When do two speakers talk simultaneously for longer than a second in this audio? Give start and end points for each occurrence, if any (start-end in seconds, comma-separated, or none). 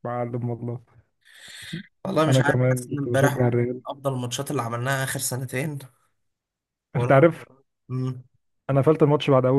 2.3-3.8